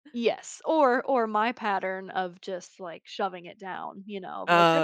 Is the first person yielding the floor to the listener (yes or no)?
no